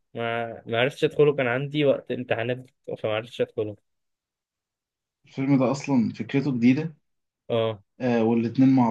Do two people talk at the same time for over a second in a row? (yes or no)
no